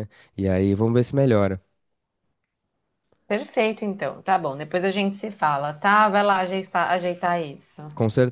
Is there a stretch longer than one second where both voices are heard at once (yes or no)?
no